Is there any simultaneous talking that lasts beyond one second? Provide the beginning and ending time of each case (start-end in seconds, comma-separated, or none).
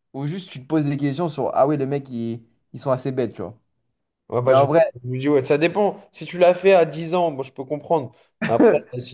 none